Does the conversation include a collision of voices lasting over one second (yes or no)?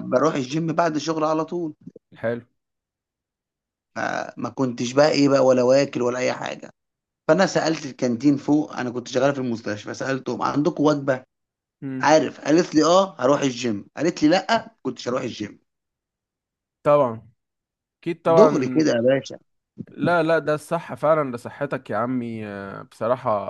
no